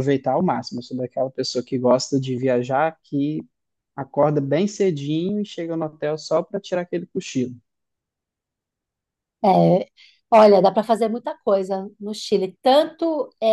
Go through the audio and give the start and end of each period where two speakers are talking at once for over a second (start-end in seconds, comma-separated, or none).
none